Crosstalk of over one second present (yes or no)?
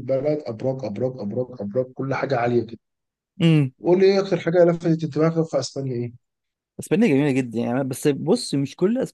no